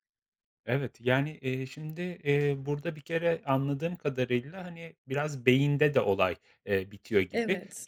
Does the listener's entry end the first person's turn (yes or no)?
no